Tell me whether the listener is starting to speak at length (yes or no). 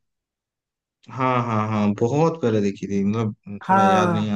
yes